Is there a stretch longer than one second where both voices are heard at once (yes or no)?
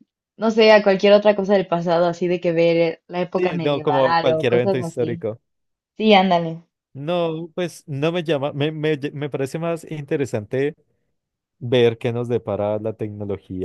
yes